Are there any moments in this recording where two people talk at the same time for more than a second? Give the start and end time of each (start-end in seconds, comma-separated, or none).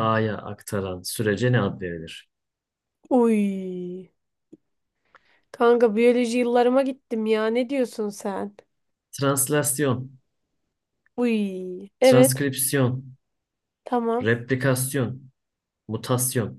none